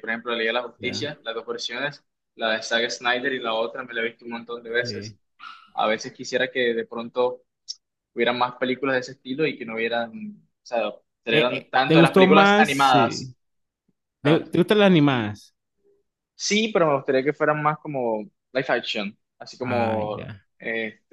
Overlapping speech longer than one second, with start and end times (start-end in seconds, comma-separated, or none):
11.3-13.3